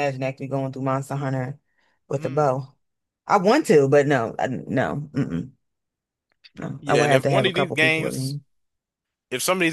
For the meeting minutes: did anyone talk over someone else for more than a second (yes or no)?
yes